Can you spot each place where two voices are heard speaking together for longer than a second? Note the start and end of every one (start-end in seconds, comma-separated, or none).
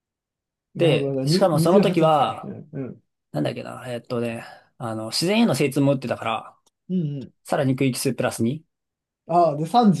0.7-2.5